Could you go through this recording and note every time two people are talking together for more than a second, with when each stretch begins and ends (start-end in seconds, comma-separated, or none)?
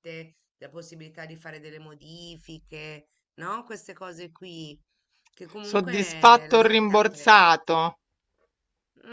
5.6-7.5